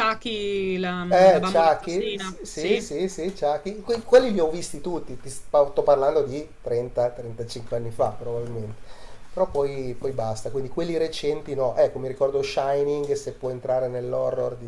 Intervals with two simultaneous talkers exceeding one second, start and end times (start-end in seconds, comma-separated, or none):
1.1-2.9